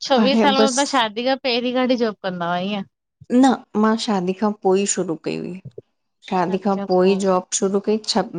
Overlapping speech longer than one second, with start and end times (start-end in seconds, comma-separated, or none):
none